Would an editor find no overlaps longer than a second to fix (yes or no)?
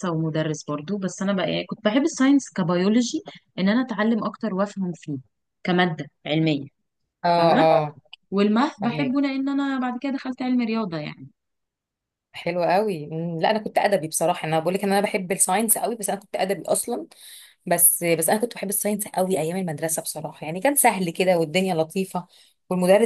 yes